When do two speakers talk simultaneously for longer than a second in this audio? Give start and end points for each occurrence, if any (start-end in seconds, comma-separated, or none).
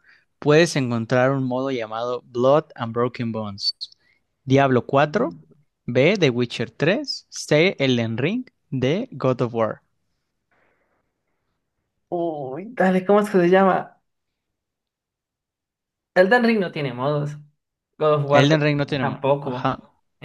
18.3-19.7